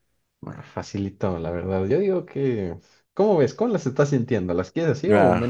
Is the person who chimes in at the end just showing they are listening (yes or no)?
no